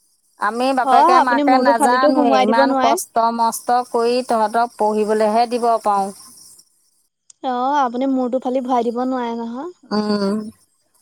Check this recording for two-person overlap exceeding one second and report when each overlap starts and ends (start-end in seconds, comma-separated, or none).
0.8-2.9